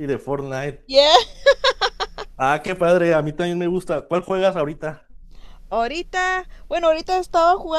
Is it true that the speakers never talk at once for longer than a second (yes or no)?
yes